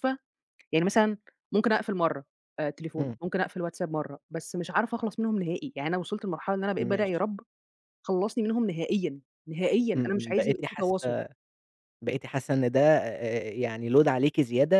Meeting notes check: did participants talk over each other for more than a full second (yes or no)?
yes